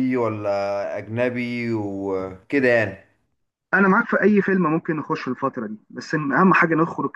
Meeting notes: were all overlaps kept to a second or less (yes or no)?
yes